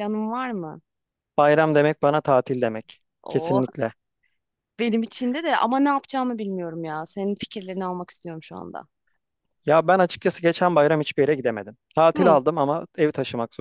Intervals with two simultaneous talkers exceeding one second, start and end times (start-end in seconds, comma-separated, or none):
none